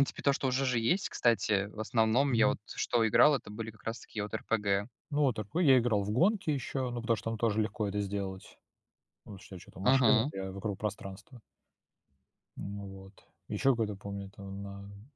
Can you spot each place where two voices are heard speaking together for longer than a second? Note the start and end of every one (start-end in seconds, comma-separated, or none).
none